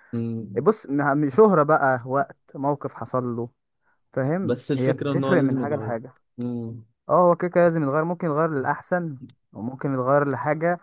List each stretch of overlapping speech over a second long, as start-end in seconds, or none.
4.4-5.9